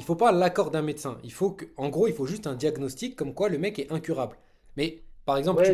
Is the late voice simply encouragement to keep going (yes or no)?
no